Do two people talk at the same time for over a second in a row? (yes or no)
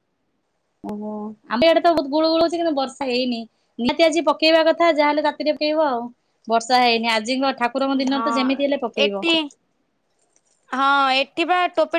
no